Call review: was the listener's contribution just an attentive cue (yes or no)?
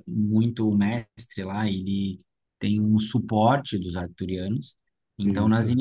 yes